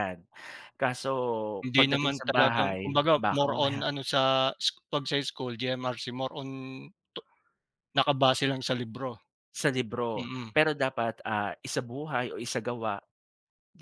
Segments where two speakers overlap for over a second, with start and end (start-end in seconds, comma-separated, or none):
1.8-3.8